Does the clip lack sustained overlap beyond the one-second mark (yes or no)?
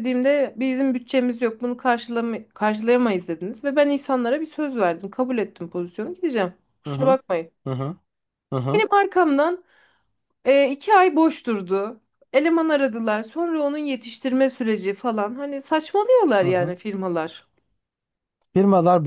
yes